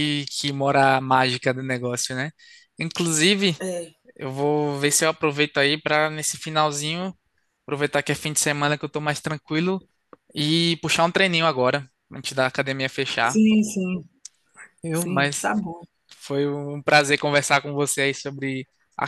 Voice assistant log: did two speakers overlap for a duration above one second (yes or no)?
no